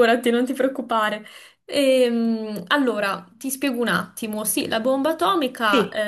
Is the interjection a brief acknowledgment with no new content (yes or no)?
yes